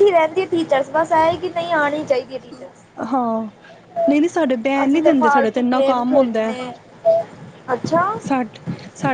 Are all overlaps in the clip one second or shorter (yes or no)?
no